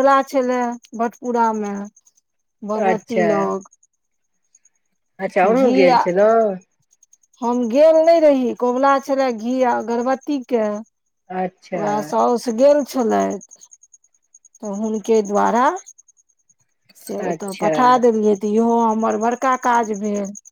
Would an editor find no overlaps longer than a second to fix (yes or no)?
yes